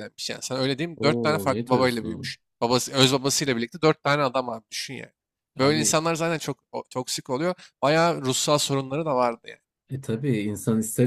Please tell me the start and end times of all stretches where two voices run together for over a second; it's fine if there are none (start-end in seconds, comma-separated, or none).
0.9-2.4